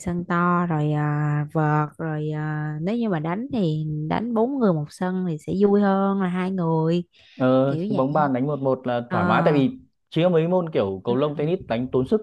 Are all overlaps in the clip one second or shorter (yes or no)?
yes